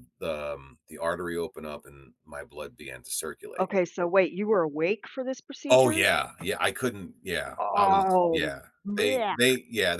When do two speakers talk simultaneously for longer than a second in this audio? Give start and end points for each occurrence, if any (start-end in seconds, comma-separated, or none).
7.6-9.4